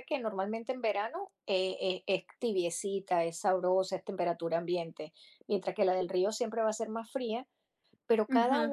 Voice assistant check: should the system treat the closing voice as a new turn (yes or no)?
no